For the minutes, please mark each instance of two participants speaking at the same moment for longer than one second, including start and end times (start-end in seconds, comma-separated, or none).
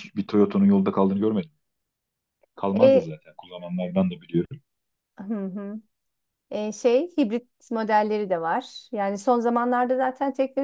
none